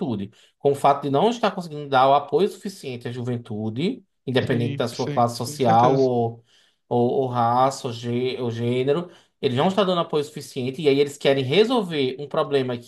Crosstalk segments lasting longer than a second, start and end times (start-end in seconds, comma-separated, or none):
4.5-6.1